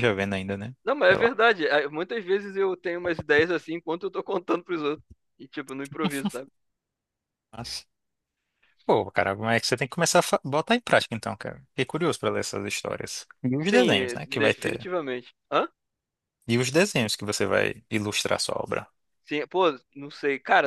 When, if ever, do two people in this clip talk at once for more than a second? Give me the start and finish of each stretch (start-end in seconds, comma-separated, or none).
13.6-14.9